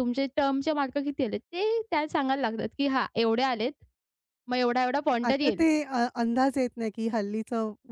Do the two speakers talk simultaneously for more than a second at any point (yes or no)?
no